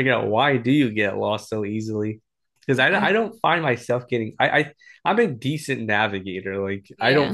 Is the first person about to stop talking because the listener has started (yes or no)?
no